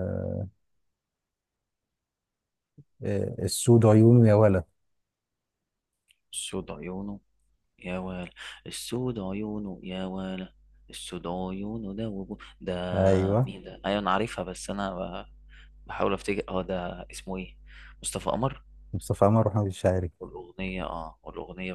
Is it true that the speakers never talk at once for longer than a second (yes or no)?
yes